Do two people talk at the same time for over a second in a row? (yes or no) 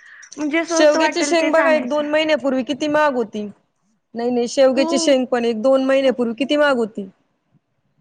yes